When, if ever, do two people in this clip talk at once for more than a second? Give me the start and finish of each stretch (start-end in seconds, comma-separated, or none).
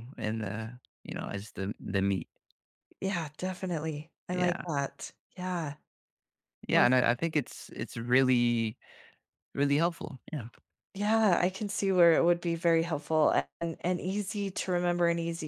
none